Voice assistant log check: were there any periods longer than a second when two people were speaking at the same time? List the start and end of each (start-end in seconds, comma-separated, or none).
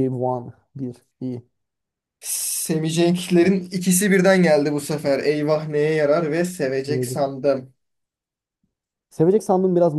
none